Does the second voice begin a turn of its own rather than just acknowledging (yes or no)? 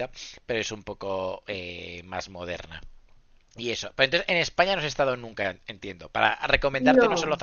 no